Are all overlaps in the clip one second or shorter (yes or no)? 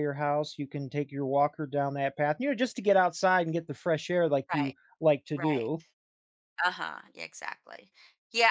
yes